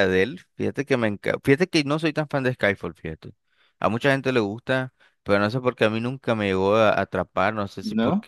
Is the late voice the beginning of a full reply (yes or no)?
no